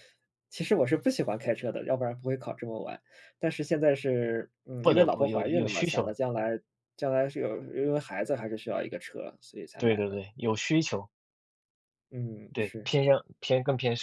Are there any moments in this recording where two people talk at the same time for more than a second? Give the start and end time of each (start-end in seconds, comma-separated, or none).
4.8-6.2